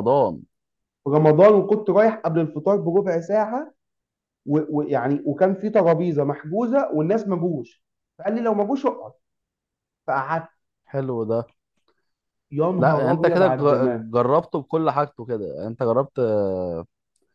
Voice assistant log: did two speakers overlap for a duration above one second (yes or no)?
yes